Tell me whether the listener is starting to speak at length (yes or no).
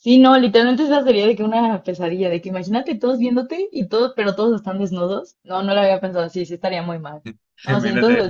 yes